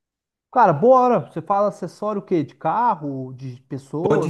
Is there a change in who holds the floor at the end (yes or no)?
yes